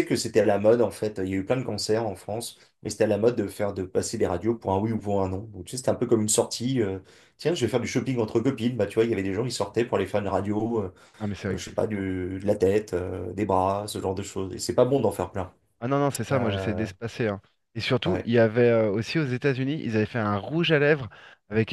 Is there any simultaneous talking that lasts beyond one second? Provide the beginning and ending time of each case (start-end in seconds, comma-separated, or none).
none